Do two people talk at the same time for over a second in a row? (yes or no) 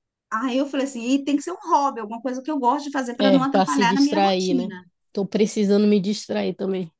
yes